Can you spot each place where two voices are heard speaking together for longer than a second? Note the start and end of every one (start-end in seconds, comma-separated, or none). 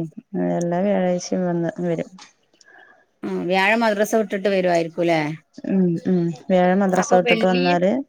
none